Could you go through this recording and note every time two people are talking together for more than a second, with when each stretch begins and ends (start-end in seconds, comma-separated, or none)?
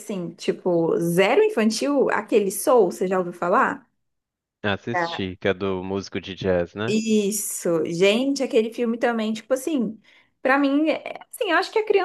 none